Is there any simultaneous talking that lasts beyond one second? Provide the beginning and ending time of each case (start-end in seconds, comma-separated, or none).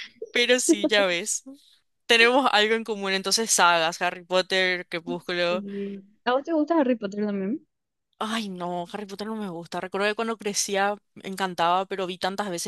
none